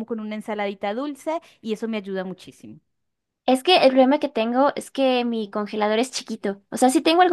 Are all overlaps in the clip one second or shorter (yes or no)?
yes